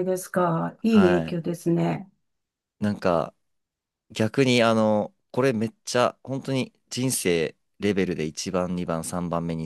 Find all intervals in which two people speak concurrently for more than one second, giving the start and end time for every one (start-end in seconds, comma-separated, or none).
none